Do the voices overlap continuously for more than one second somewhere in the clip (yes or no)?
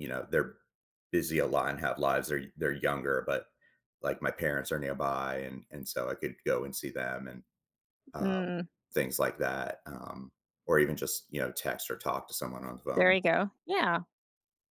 no